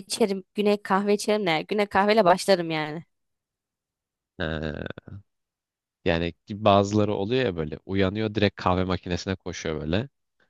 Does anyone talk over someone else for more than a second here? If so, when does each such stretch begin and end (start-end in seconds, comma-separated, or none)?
none